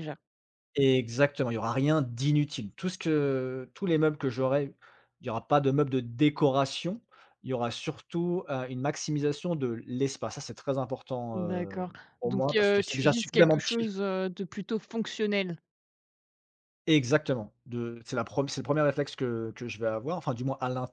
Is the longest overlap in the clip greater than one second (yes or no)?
yes